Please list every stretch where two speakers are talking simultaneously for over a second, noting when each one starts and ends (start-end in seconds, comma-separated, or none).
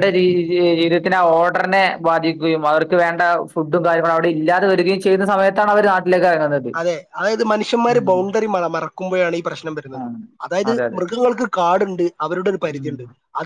none